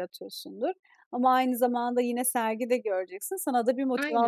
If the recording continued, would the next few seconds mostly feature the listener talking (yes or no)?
no